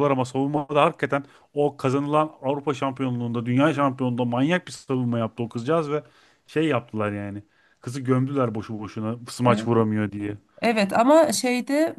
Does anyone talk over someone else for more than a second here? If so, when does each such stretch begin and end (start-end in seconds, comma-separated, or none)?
none